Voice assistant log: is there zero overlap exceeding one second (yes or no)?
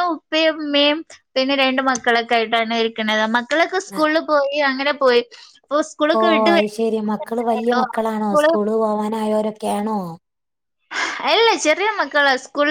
no